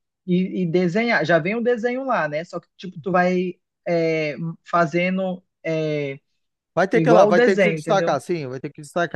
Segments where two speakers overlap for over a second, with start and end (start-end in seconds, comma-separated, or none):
6.9-8.2